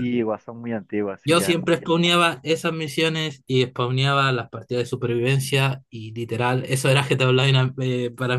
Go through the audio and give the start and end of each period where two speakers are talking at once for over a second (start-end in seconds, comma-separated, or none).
none